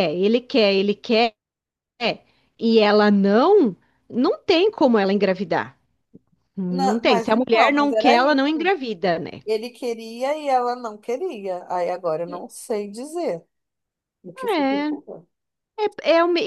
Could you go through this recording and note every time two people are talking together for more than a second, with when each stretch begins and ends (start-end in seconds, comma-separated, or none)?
6.7-8.7